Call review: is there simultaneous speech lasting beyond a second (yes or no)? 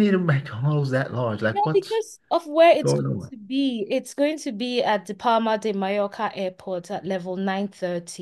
no